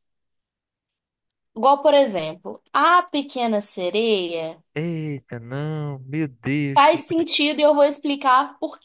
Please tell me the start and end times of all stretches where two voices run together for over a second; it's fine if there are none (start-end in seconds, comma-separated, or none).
none